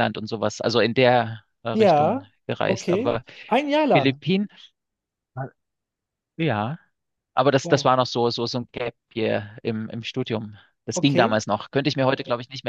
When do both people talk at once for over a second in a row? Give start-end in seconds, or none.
1.7-3.2